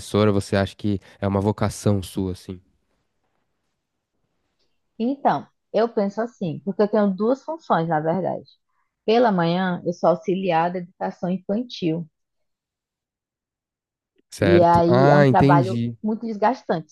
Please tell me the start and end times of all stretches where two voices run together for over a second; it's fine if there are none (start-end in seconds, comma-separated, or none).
14.4-15.9